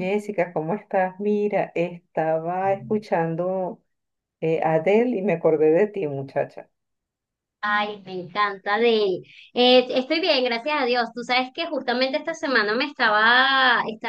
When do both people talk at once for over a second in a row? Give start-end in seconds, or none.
none